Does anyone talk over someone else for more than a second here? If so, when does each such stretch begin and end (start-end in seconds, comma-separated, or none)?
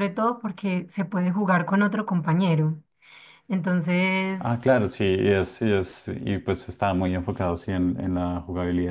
none